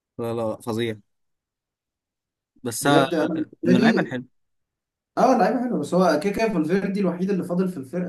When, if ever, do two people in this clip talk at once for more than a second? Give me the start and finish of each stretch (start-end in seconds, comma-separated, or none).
2.8-4.1